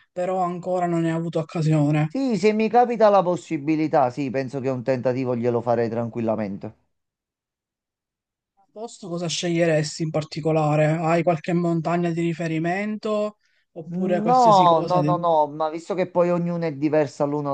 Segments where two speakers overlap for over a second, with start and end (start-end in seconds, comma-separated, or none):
13.9-15.3